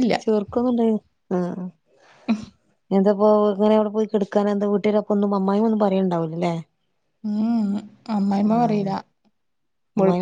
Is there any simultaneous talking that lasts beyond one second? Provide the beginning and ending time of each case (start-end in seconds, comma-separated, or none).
none